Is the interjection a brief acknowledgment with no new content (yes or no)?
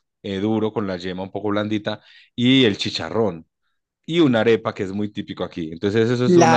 no